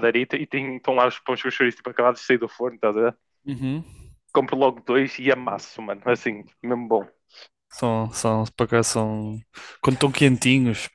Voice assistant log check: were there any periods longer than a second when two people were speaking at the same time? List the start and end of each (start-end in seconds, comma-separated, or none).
none